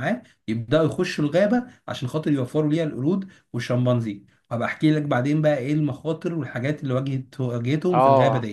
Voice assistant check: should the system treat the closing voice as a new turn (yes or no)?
yes